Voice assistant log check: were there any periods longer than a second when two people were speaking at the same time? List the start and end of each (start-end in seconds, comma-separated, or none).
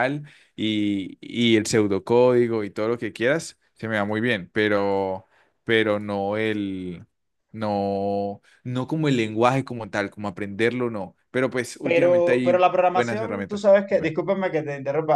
11.8-14.1